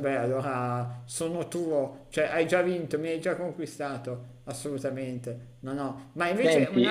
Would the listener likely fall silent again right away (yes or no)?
yes